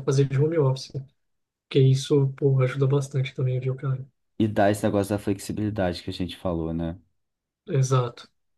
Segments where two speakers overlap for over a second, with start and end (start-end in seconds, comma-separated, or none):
none